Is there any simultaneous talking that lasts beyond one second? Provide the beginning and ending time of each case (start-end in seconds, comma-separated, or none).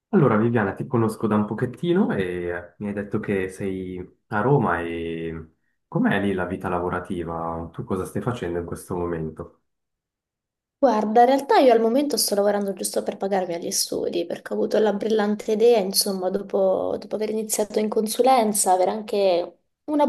none